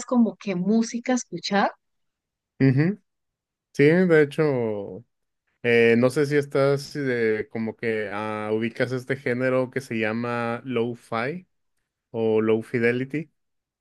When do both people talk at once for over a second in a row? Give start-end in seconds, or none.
none